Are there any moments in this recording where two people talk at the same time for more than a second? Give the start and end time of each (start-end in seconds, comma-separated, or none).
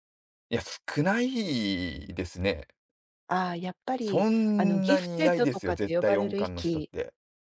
4.0-6.9